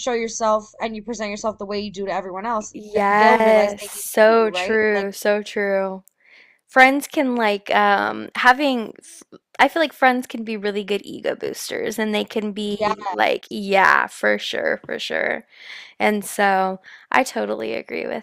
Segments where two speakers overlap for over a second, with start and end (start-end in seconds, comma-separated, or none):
2.7-5.1